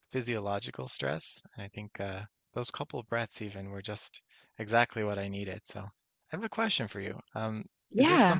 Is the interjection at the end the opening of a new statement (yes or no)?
no